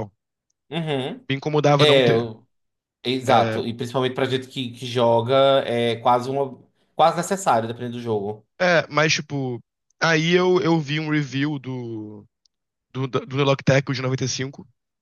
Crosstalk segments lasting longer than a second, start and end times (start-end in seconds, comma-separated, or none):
none